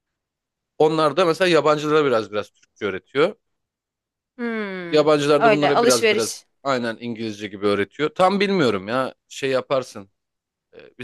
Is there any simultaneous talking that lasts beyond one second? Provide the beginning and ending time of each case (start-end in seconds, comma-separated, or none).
4.9-6.5